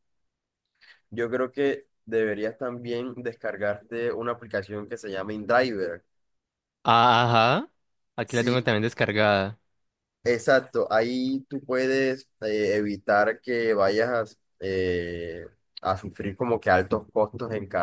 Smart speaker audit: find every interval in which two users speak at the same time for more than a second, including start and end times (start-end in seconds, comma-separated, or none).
none